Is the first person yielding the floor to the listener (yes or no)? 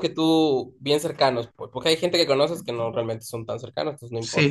yes